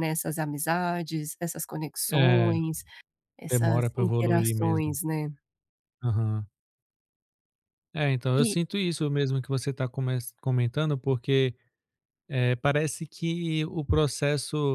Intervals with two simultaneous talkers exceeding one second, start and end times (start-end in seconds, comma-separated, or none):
3.5-4.9